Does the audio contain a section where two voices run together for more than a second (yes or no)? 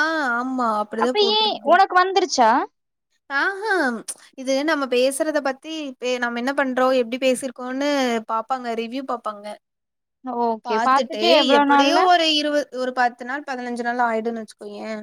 no